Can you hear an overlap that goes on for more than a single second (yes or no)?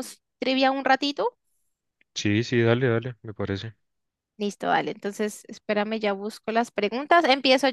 no